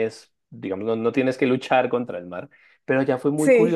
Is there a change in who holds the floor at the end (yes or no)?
no